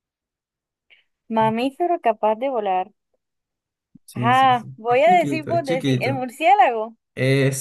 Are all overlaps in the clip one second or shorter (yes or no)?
no